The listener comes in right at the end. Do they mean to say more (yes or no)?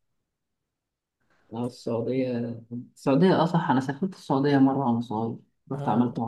yes